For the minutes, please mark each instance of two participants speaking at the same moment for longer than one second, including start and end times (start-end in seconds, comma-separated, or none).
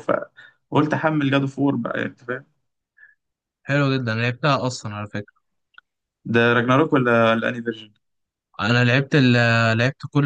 none